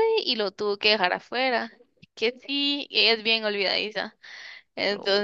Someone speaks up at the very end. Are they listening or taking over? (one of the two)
listening